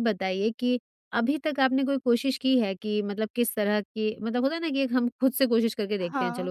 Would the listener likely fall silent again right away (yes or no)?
yes